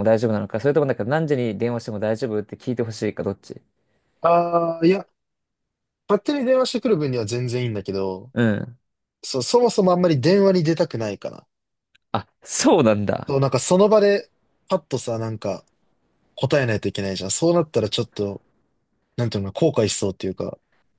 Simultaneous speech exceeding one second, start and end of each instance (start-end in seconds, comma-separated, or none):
none